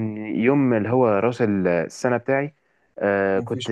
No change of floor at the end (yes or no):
yes